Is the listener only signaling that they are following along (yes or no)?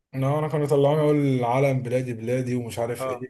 no